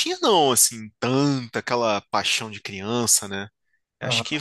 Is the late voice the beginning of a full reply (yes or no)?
no